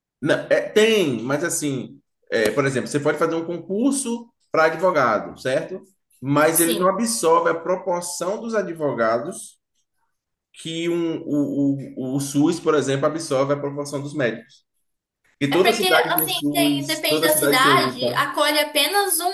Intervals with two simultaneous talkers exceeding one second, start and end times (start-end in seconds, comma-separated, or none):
15.5-18.3